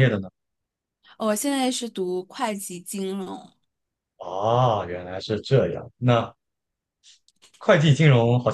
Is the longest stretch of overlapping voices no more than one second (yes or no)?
yes